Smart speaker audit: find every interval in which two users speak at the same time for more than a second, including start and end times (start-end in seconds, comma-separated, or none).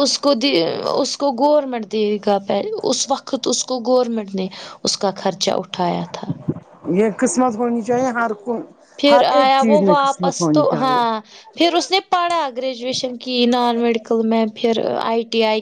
9.1-11.0